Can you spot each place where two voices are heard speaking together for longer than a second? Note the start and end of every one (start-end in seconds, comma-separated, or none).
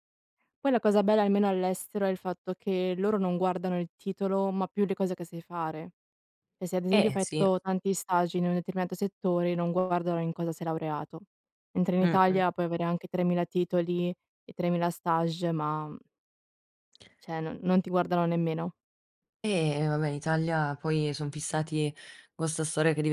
none